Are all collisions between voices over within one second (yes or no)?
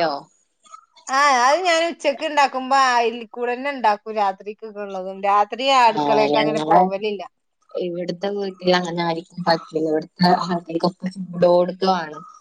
yes